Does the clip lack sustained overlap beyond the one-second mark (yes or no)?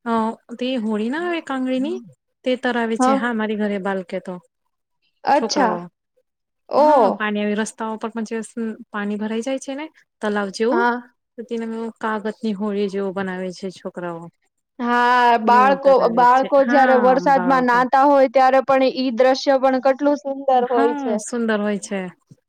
no